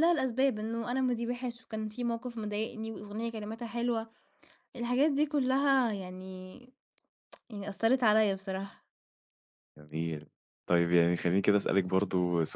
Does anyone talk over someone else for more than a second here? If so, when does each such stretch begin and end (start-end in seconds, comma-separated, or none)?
none